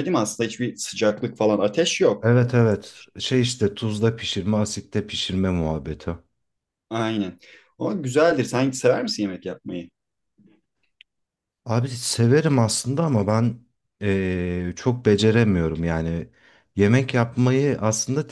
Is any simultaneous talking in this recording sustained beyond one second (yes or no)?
no